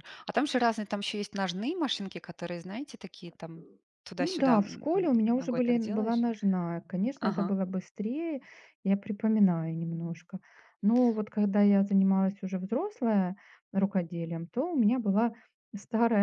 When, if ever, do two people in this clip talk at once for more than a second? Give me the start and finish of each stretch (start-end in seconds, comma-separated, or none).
4.2-6.2